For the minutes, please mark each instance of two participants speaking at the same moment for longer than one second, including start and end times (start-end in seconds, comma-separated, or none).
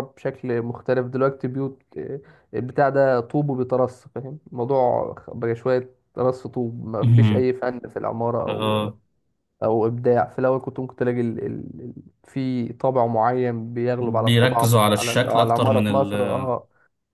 14.0-16.1